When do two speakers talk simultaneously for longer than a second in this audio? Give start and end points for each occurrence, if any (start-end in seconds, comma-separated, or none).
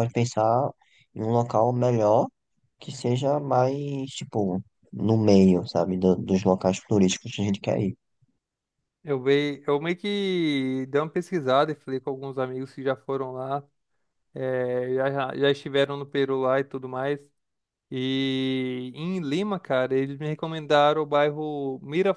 none